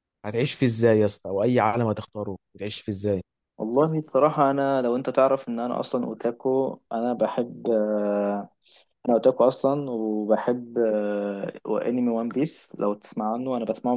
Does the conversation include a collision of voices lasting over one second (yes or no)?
no